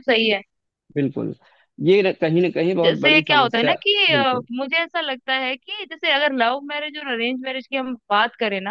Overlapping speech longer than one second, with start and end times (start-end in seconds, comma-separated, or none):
2.8-4.5